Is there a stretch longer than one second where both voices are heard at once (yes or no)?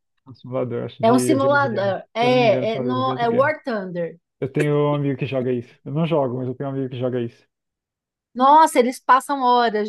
yes